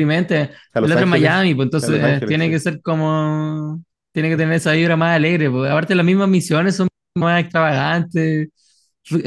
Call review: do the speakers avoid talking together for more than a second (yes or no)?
no